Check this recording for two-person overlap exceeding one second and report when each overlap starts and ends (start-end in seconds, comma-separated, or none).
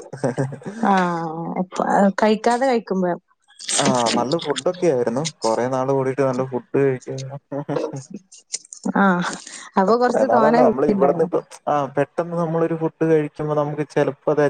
none